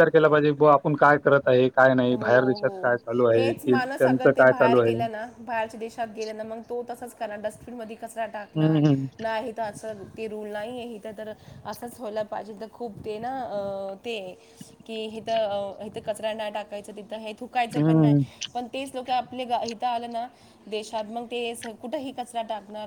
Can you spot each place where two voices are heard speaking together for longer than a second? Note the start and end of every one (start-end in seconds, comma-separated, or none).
3.4-4.9